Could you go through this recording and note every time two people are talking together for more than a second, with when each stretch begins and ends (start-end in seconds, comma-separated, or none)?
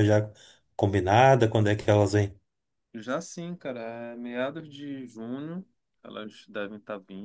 none